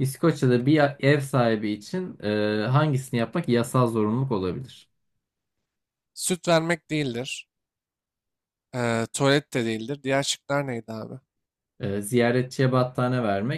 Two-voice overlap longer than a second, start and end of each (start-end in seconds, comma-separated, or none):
none